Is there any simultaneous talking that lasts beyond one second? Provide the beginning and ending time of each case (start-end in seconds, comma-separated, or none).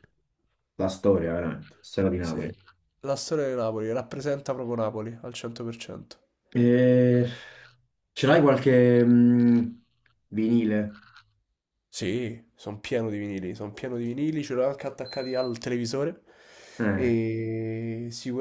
none